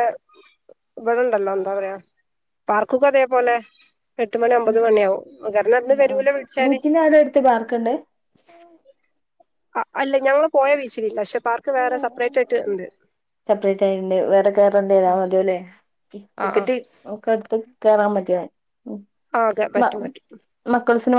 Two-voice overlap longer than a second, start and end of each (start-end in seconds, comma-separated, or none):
none